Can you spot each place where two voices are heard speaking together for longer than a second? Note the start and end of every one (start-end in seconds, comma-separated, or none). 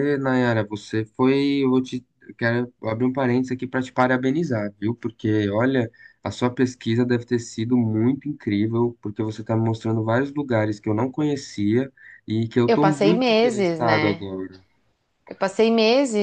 12.7-14.2